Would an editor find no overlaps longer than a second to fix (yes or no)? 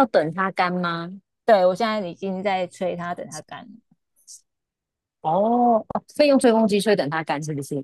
yes